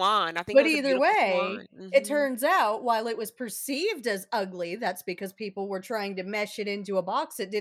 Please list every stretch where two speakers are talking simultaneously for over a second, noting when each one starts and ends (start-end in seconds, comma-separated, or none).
0.5-2.3